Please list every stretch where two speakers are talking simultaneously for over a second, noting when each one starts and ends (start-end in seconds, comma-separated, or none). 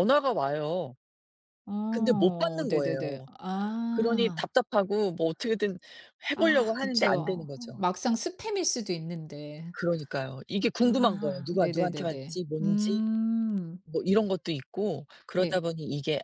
1.9-3.3, 6.3-7.8, 10.8-13.0